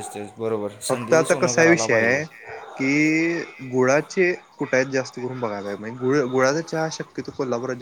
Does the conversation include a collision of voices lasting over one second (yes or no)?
yes